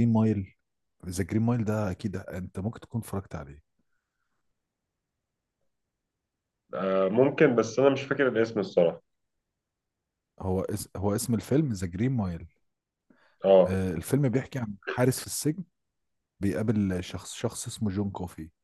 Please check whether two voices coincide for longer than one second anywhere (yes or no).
no